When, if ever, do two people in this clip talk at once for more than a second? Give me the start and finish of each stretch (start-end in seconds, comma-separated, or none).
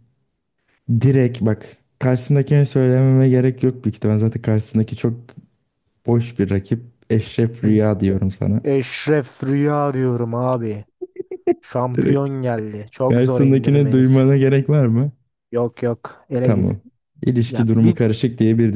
13.1-14.3